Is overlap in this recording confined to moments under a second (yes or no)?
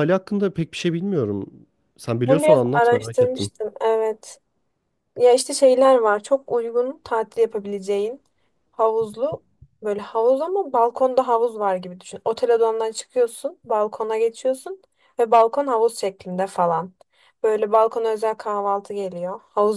no